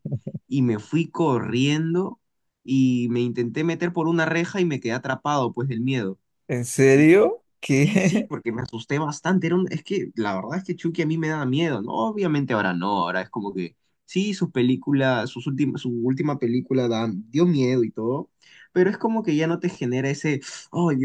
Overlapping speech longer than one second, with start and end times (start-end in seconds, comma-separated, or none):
none